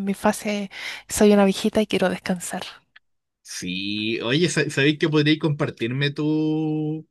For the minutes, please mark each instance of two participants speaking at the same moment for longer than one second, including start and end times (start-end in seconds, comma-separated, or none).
none